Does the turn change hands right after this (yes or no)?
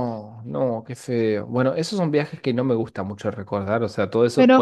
yes